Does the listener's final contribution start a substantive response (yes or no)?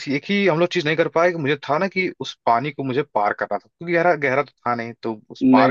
no